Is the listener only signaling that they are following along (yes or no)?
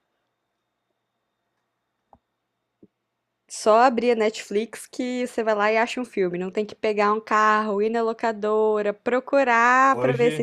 yes